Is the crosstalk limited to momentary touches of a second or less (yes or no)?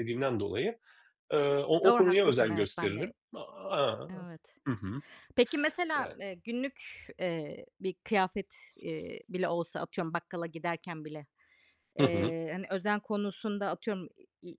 no